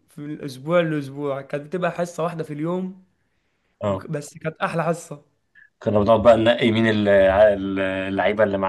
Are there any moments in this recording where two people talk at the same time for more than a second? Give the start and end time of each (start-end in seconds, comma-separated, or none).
none